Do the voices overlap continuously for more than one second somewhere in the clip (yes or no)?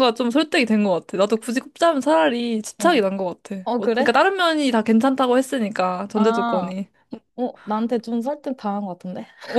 no